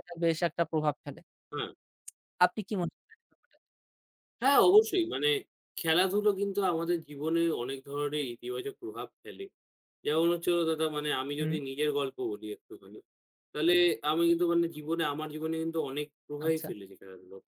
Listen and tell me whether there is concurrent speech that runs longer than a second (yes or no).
no